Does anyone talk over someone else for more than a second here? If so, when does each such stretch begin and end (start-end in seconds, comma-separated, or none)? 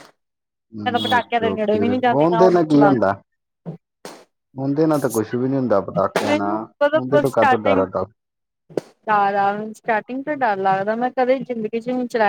0.8-2.9, 6.3-7.8